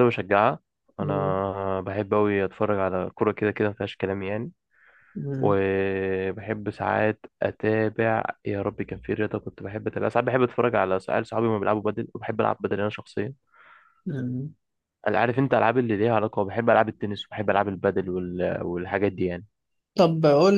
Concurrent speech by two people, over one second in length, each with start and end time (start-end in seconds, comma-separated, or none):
none